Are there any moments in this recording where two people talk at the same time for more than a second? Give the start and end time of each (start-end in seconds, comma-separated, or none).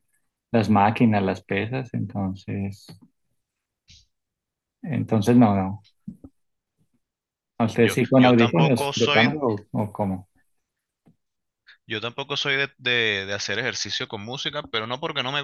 7.8-9.3